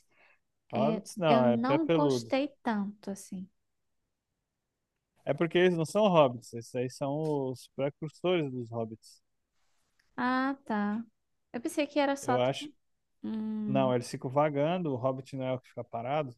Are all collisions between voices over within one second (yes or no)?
no